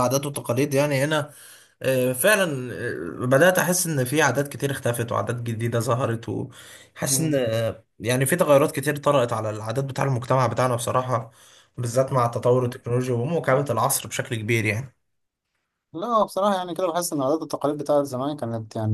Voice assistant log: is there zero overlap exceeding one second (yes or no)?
yes